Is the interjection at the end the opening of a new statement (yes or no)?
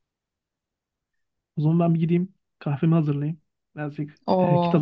yes